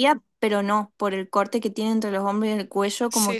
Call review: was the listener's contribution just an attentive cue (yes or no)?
yes